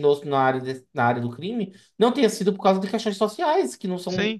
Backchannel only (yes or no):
no